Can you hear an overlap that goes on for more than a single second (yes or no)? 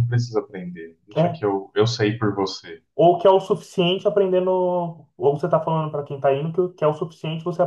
no